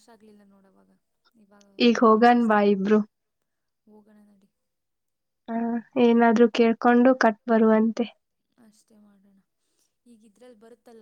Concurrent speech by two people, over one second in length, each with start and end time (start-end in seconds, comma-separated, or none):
none